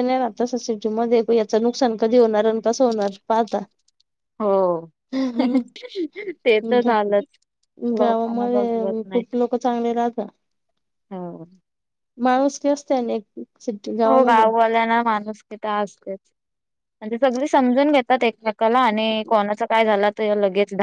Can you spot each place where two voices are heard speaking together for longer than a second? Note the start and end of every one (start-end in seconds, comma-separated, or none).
8.0-9.2